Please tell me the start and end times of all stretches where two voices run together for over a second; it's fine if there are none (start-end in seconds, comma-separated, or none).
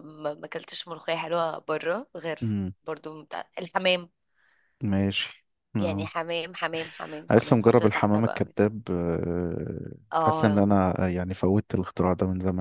7.3-8.6